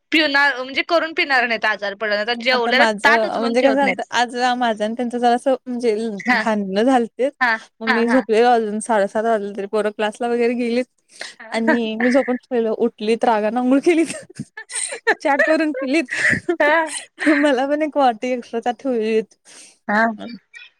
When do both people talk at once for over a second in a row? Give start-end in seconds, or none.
2.5-4.0